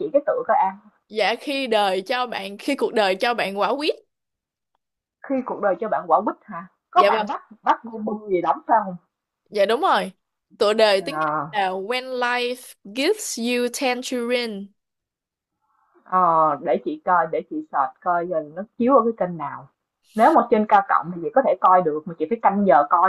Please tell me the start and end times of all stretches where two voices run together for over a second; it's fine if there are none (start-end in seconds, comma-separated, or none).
none